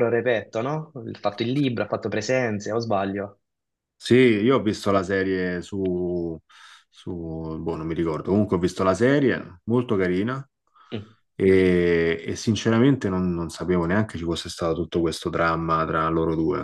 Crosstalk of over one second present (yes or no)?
no